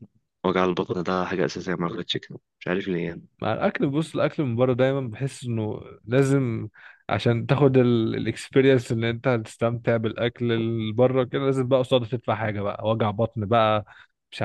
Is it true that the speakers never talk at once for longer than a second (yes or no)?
yes